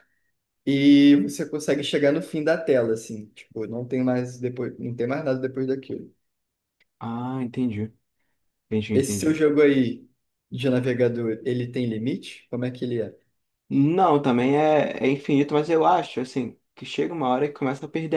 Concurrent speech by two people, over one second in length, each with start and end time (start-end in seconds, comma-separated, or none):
none